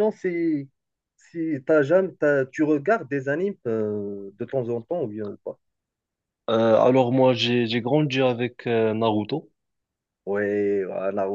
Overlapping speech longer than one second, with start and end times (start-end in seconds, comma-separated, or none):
none